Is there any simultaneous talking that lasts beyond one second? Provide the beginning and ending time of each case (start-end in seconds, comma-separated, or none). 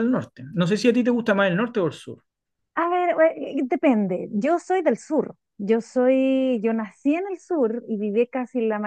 none